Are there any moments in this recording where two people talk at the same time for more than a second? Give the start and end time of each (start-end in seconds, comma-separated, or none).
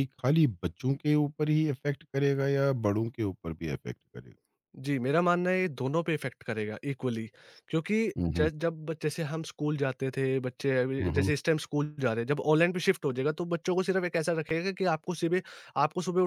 none